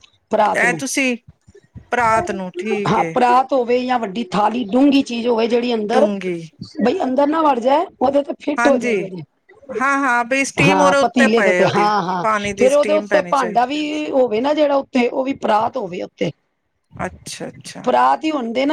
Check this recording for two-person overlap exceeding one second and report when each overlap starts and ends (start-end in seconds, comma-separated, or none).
10.7-13.7